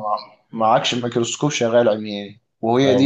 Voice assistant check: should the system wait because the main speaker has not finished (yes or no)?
no